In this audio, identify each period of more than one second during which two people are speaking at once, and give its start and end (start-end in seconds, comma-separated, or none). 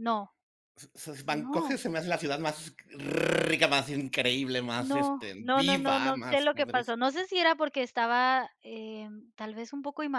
4.8-6.9